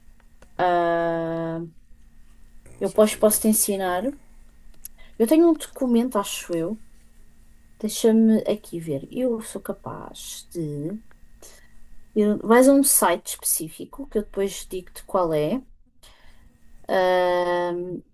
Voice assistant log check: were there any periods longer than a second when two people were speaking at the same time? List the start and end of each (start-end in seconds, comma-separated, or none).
2.8-4.0